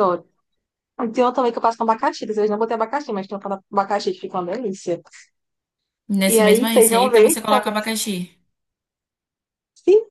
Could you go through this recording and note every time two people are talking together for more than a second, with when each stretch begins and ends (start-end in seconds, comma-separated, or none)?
6.2-7.9